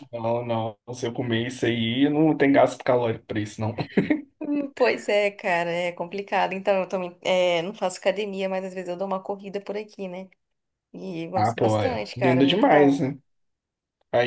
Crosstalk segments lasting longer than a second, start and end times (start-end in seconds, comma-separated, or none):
11.3-13.1